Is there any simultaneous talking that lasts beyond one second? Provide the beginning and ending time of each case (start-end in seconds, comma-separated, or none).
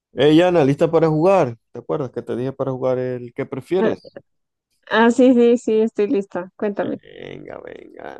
none